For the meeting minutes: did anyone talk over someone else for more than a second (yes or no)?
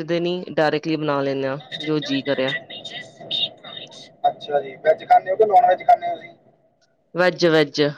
no